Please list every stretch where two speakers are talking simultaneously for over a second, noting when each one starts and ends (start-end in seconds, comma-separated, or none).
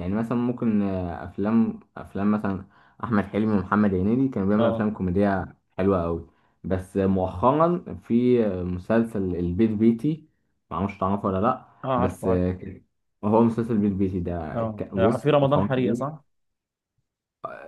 14.6-16.2